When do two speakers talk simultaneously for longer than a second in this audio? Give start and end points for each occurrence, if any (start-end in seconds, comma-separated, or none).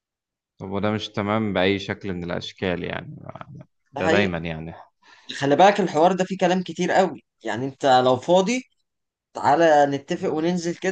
none